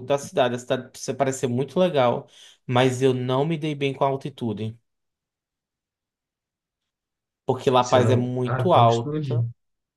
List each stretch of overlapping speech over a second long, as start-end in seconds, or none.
7.8-9.4